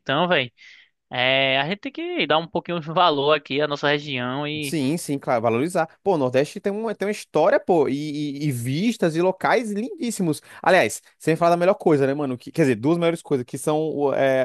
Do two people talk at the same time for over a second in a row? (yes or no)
no